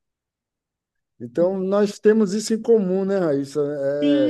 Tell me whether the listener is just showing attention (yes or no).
no